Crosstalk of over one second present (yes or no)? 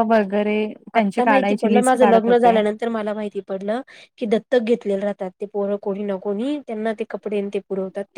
yes